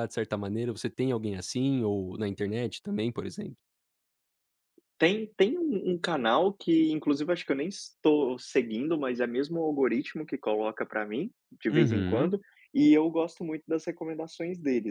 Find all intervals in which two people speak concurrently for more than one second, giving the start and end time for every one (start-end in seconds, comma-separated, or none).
none